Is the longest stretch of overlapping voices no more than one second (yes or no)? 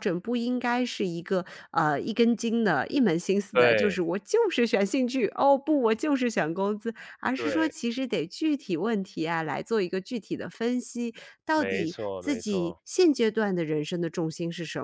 no